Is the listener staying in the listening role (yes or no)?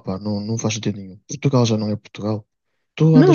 yes